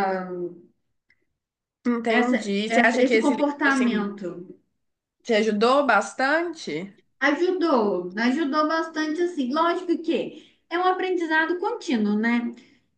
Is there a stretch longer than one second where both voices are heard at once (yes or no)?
yes